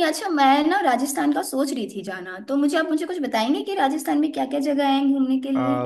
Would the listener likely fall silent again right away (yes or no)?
no